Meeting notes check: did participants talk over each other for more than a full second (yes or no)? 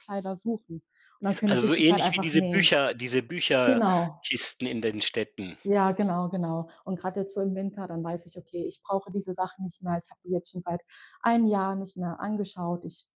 yes